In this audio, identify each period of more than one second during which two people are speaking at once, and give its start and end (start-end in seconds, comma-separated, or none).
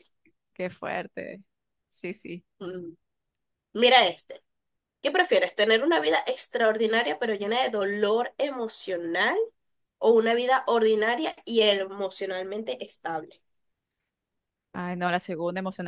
none